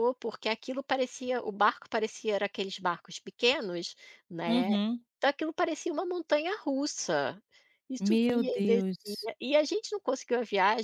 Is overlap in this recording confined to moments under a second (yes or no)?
no